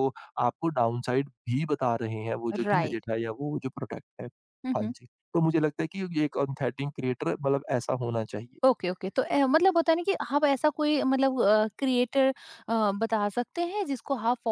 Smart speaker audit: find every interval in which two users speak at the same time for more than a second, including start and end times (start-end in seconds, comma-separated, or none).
none